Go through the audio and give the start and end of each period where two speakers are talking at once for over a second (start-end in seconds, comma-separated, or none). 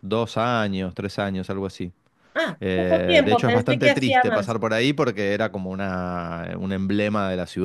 2.6-4.5